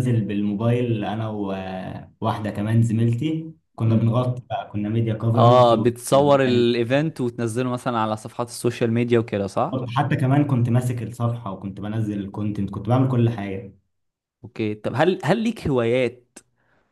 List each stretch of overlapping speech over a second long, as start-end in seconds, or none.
5.3-6.7